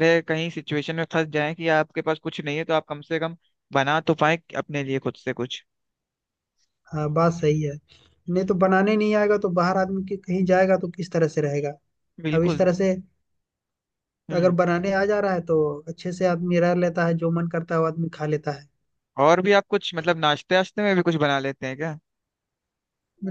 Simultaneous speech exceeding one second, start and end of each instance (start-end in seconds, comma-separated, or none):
none